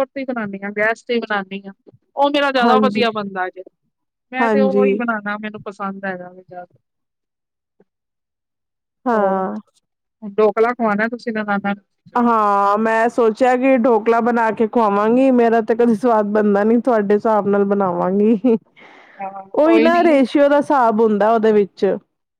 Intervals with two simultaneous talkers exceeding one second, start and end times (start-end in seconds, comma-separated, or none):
none